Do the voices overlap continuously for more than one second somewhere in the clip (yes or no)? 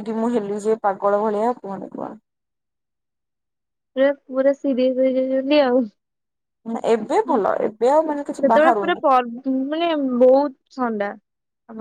yes